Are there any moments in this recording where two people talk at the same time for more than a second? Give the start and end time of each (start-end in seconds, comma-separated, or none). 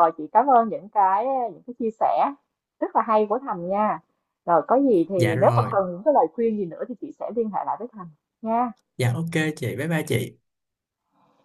none